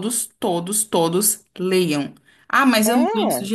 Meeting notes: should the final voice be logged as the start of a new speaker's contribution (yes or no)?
no